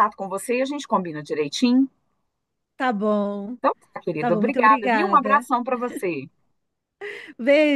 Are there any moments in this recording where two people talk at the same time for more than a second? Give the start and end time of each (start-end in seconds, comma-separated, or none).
4.2-5.5